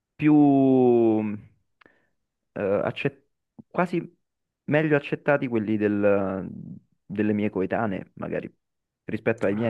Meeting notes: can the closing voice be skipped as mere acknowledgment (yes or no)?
no